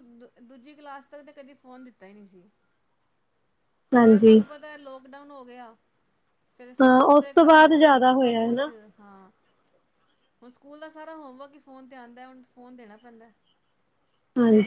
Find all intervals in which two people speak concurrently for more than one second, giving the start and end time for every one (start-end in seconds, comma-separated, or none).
6.8-8.7